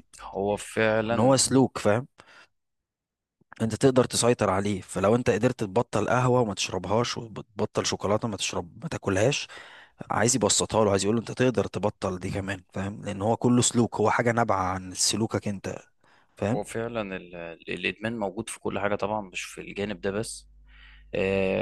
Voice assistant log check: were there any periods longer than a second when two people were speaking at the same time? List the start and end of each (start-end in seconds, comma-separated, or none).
none